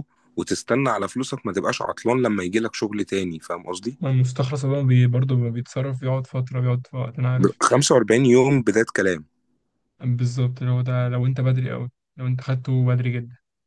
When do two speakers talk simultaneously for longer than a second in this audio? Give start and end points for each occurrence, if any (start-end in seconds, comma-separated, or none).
none